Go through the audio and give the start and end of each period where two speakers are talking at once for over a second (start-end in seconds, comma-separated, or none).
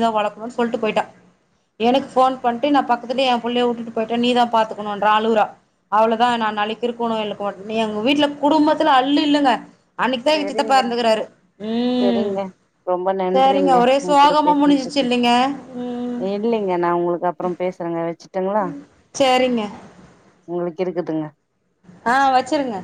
13.3-15.1